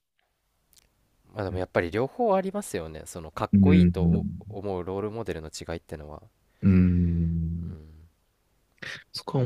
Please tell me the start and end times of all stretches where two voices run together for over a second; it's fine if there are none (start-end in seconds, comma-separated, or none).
none